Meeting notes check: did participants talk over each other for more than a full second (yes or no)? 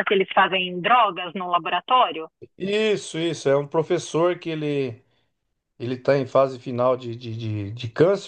no